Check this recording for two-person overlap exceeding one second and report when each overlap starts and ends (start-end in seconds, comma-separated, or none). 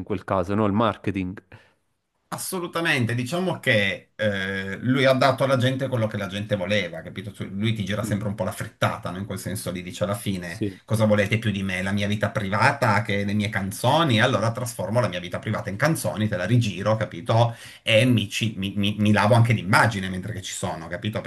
none